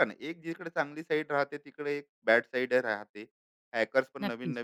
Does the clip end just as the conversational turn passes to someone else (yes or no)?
no